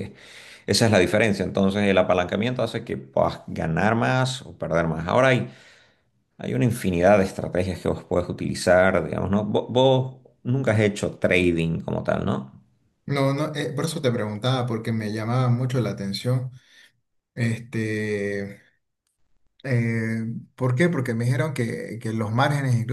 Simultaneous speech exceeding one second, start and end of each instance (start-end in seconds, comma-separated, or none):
none